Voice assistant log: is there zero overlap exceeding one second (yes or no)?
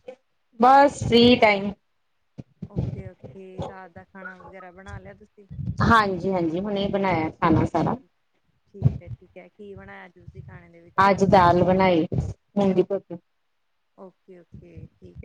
yes